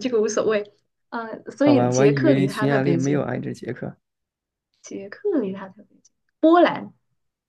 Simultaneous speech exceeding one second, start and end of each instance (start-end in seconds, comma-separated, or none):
1.6-3.3